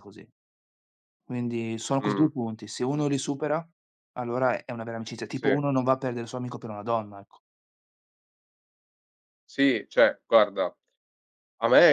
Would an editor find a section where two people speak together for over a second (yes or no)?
no